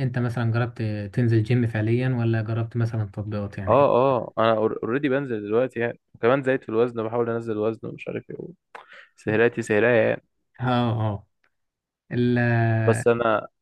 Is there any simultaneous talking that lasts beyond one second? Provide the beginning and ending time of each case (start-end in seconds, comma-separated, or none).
none